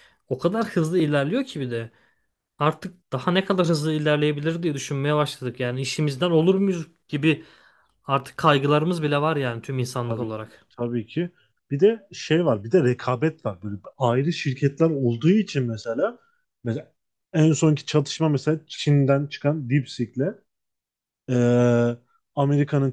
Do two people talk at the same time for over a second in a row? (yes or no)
no